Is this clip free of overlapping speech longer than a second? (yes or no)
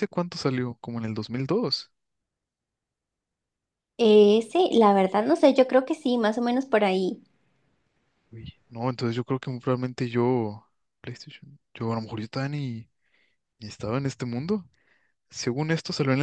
yes